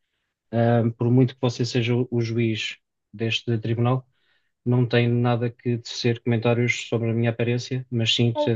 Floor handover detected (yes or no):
no